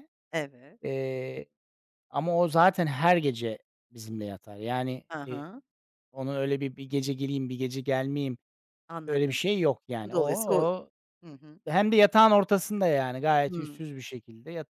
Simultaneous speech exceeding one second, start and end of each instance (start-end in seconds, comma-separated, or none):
none